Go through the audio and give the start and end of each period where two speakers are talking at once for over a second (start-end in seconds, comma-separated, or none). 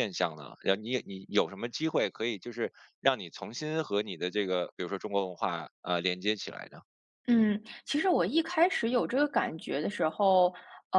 none